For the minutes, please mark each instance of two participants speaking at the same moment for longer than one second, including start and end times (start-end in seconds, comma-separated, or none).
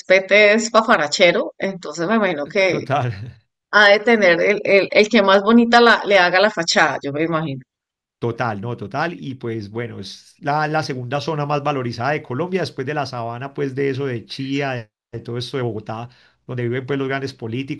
none